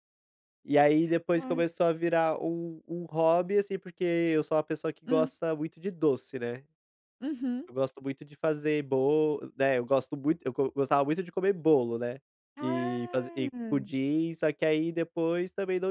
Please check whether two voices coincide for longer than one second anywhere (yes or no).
yes